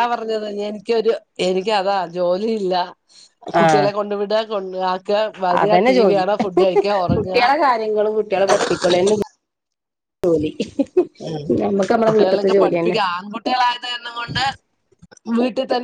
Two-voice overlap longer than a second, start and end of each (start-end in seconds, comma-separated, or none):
none